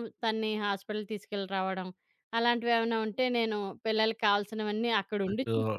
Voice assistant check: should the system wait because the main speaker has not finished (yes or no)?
yes